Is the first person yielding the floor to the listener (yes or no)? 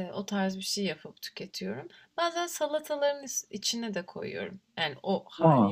no